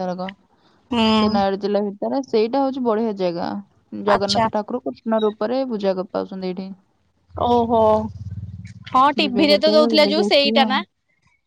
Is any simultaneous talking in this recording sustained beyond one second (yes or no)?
yes